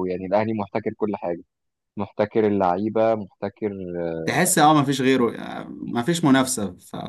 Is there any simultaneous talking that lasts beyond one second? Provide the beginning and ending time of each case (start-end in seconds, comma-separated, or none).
none